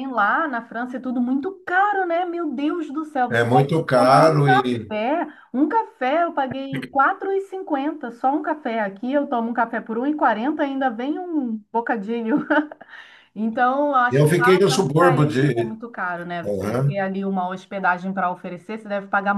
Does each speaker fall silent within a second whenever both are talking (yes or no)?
no